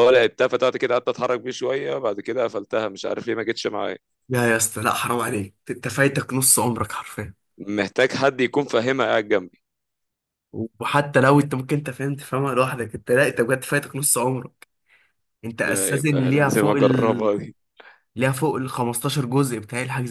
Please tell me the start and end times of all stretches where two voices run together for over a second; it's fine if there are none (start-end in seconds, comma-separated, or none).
15.6-17.3